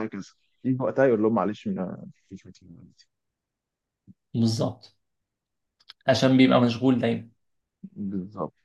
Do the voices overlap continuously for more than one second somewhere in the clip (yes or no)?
no